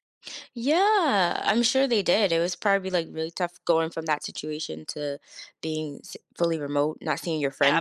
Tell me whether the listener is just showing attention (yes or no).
no